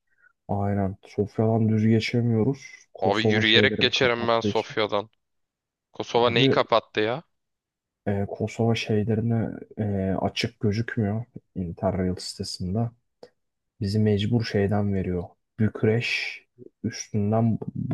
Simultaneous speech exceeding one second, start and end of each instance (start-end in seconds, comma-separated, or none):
3.0-4.8